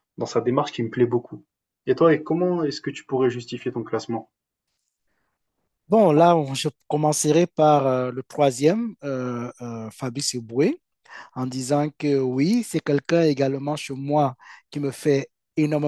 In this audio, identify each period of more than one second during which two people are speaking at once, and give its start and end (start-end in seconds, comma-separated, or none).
none